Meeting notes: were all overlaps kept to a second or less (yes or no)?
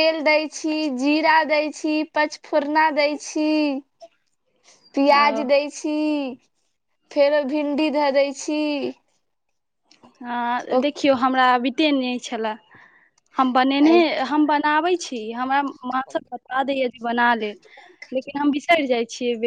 yes